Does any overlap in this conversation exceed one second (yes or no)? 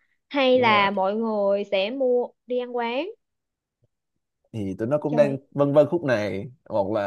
no